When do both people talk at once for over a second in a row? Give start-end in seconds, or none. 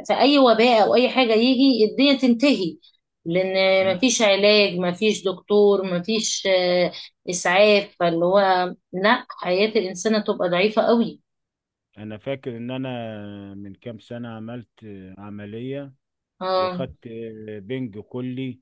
none